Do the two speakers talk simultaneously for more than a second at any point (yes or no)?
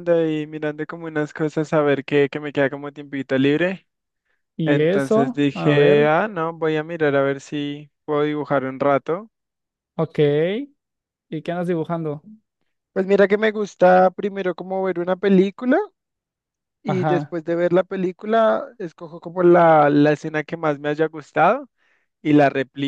yes